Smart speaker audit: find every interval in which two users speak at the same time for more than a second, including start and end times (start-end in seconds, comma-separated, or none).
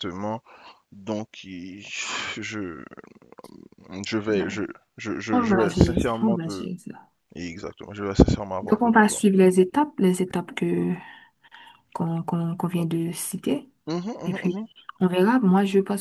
5.3-6.7